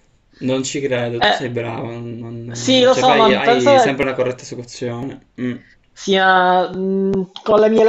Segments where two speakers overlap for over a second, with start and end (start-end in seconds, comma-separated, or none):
2.5-4.0